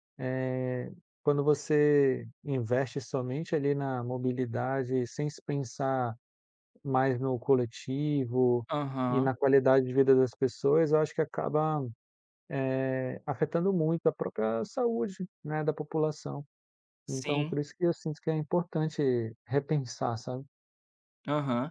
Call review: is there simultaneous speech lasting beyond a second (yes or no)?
no